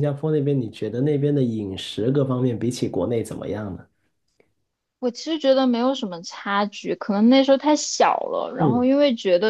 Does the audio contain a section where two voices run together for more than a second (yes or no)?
no